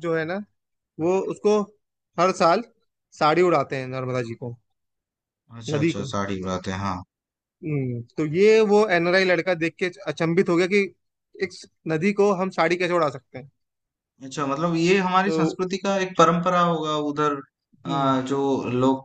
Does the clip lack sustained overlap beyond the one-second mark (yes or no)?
yes